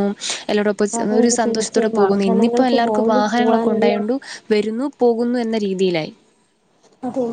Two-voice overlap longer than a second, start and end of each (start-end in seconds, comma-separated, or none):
1.0-4.0